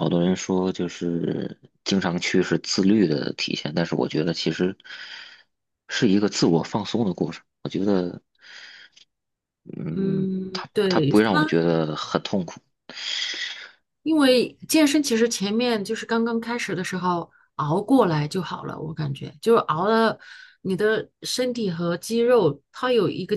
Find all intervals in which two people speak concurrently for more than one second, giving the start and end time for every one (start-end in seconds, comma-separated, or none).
9.9-11.5